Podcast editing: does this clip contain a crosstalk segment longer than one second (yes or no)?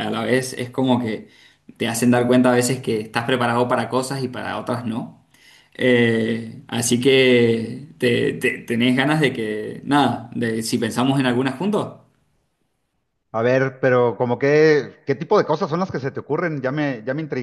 no